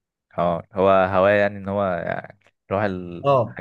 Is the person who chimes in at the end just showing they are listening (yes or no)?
no